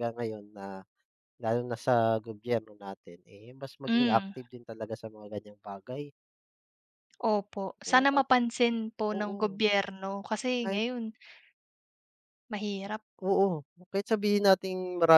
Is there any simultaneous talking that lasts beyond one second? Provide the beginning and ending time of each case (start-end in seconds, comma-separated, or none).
none